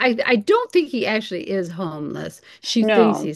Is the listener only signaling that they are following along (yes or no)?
yes